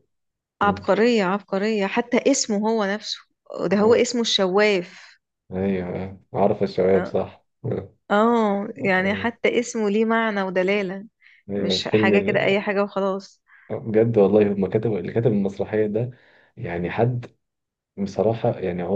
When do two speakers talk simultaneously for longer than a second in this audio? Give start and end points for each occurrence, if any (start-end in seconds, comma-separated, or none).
none